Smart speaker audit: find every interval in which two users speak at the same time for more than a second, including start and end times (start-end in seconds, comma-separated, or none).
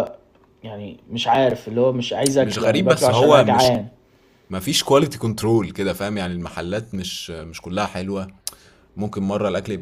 2.4-3.7